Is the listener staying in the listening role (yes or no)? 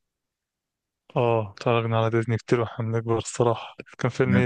no